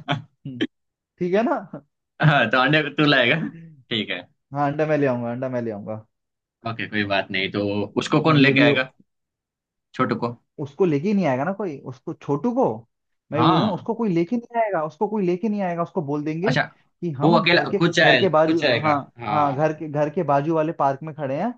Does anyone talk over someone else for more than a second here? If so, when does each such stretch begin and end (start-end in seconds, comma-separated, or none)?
17.2-19.7